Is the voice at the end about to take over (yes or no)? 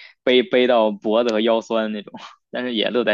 no